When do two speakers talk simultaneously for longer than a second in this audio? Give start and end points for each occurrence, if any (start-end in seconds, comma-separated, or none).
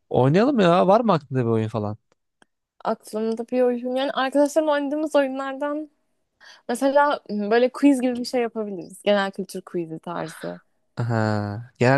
none